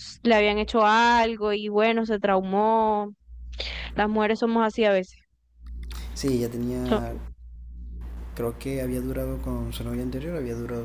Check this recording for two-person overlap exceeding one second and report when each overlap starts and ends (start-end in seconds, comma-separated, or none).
none